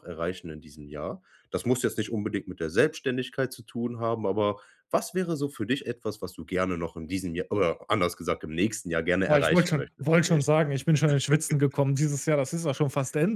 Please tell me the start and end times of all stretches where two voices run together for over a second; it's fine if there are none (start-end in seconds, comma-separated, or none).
9.2-10.5